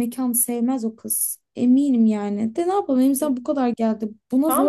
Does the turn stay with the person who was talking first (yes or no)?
no